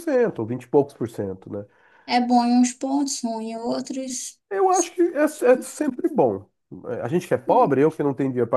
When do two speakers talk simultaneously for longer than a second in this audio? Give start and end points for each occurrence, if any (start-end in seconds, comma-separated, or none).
none